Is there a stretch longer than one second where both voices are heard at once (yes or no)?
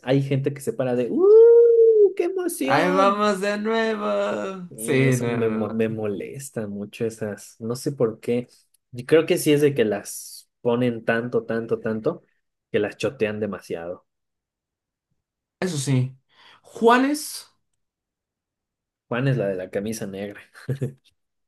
yes